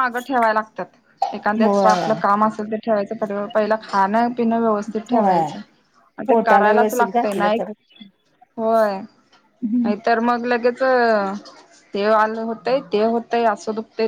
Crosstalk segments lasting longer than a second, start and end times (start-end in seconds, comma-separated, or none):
6.3-7.6